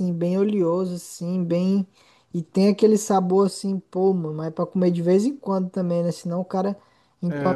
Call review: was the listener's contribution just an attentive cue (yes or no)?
no